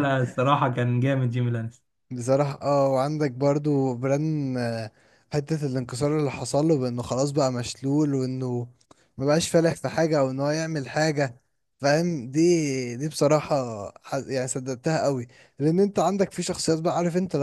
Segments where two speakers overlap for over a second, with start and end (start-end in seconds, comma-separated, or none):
none